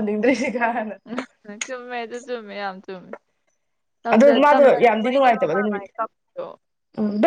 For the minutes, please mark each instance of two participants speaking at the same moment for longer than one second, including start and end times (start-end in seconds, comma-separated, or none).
4.1-5.9